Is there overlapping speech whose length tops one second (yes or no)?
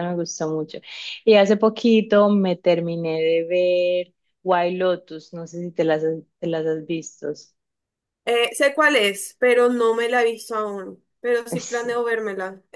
no